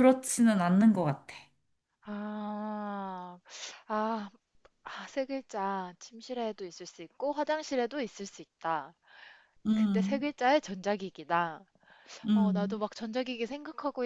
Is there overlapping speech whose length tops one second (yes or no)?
no